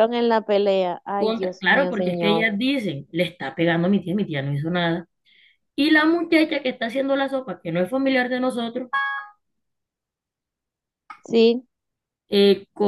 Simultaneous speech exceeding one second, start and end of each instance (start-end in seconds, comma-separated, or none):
1.2-2.5